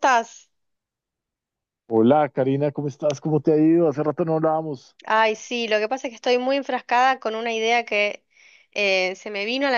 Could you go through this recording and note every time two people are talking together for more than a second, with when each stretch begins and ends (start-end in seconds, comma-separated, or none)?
none